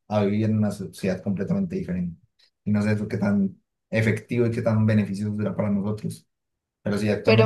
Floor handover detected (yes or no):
no